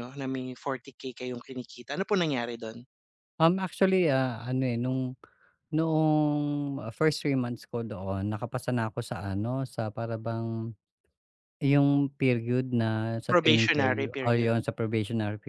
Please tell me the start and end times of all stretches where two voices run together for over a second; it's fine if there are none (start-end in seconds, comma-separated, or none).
13.3-14.5